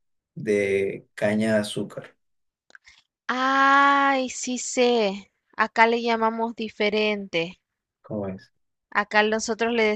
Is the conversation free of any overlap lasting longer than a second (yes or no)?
yes